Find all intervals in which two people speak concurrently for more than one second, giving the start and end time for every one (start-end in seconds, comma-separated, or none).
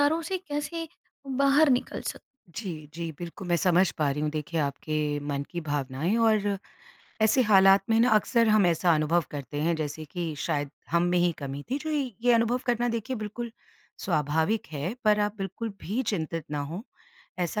none